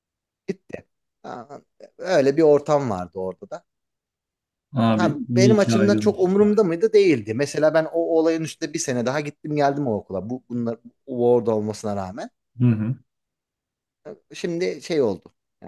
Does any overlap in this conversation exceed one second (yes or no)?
yes